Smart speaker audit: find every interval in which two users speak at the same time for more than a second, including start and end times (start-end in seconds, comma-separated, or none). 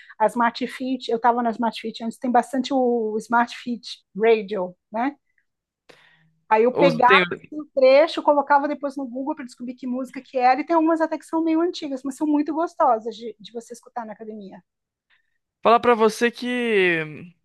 none